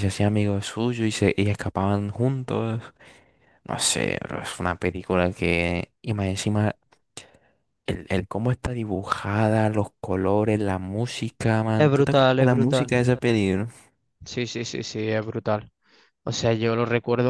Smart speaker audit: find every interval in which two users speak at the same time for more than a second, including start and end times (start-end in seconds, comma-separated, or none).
11.8-13.0